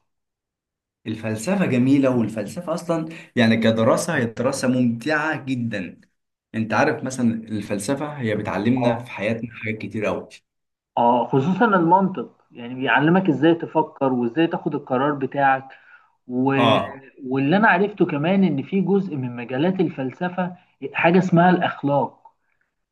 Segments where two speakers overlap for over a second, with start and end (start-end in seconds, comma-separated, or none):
none